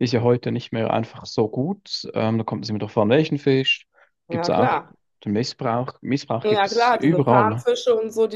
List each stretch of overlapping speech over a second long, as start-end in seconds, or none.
6.4-7.6